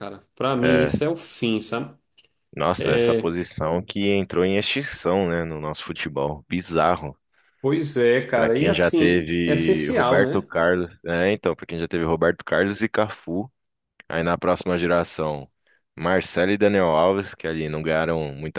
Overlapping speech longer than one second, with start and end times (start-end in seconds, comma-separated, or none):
8.3-10.5